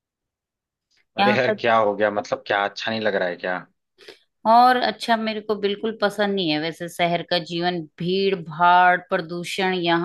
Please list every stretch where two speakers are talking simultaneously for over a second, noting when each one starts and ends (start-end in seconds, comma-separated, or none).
none